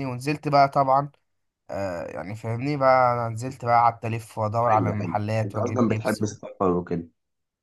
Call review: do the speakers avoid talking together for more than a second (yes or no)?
no